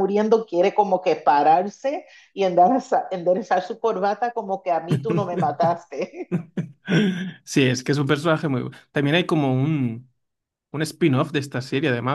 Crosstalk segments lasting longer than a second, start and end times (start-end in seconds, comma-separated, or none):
none